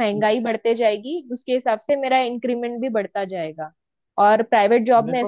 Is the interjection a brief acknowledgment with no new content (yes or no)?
yes